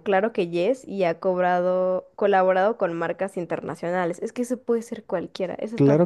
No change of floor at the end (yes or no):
no